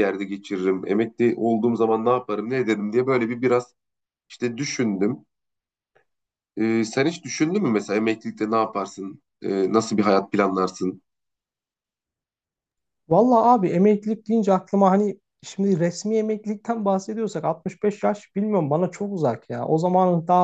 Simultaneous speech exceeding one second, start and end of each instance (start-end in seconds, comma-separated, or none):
none